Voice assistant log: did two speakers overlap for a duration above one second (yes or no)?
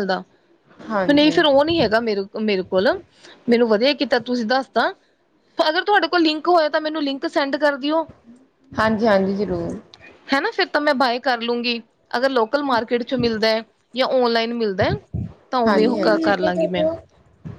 no